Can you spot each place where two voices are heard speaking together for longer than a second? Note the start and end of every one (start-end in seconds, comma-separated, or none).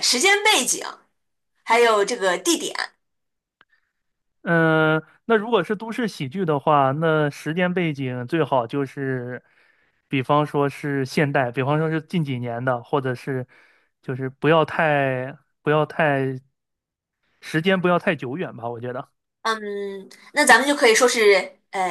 none